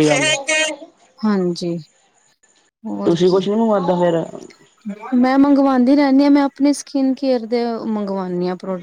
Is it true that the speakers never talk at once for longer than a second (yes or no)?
yes